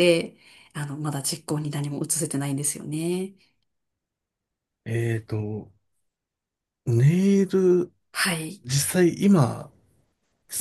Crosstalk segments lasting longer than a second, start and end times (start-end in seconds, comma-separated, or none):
none